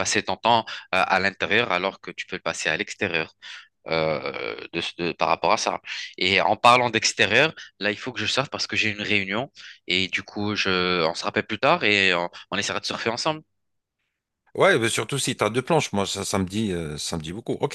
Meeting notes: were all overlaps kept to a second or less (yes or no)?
yes